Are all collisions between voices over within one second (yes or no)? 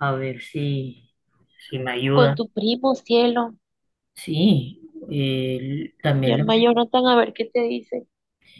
yes